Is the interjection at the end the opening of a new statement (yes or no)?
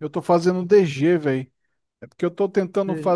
no